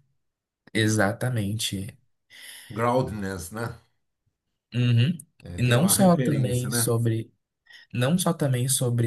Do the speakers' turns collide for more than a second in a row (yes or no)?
yes